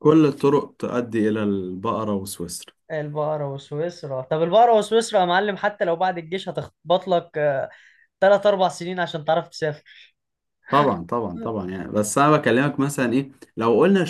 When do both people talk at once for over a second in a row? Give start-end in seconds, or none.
none